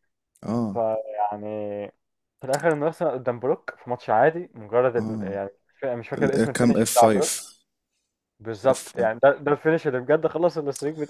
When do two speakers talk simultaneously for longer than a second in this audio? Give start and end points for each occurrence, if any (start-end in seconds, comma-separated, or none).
6.2-7.5